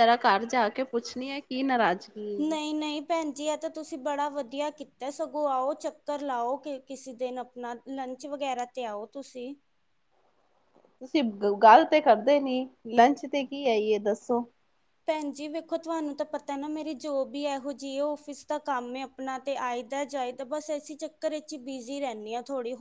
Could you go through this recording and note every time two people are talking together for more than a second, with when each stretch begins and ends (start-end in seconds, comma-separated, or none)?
none